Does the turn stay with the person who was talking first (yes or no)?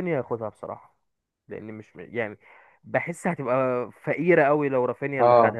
yes